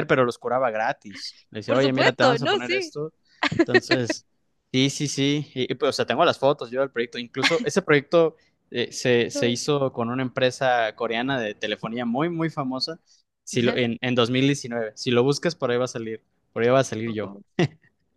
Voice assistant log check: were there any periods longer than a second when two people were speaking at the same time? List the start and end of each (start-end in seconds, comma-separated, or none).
1.6-2.9